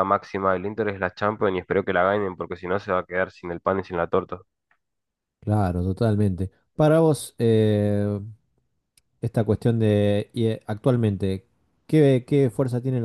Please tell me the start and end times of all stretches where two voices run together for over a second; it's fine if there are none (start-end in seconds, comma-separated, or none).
none